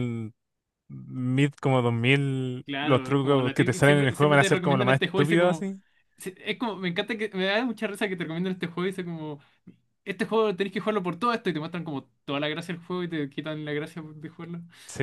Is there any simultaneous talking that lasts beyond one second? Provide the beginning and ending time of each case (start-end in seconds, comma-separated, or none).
2.6-5.7